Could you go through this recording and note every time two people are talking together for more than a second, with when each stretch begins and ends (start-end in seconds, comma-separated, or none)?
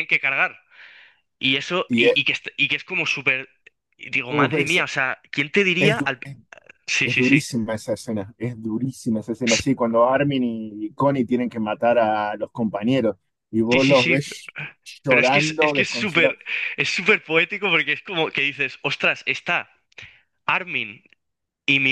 15.1-16.4